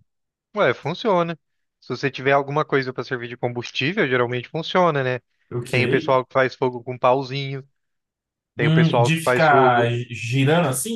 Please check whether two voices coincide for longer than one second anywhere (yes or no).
yes